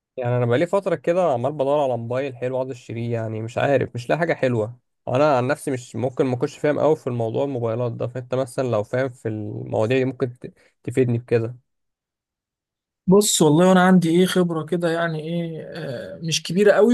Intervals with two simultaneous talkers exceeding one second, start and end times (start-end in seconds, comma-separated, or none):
none